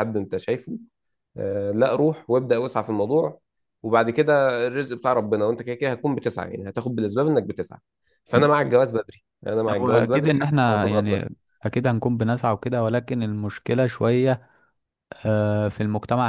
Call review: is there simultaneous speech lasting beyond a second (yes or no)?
yes